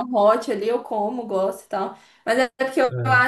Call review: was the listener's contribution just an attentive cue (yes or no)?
yes